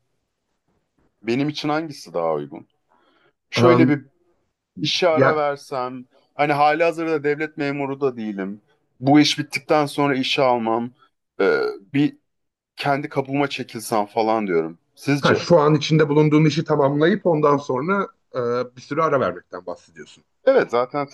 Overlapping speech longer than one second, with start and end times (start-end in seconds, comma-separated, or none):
none